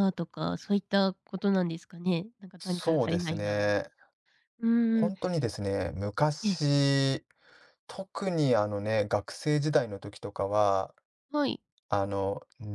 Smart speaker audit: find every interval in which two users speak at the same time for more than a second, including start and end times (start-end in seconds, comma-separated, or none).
2.6-3.8